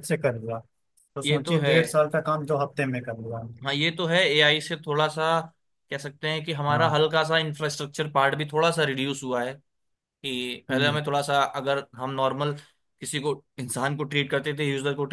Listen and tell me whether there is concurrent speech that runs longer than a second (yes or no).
no